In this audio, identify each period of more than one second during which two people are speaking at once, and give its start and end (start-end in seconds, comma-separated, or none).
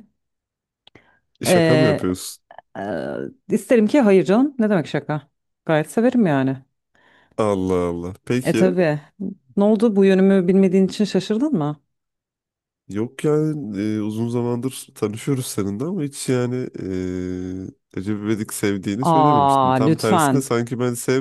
19.0-20.5